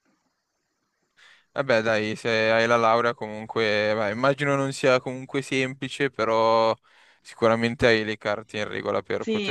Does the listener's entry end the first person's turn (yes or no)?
yes